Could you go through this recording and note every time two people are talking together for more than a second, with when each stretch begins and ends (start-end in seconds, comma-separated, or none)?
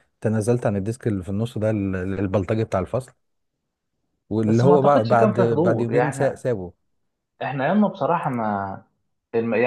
4.4-6.4